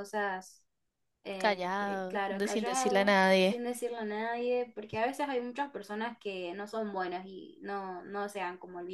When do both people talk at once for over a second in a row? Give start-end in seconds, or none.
1.4-3.6